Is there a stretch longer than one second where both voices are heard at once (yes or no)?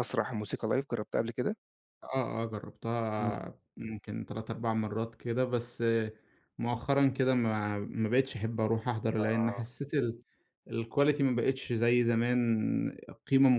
no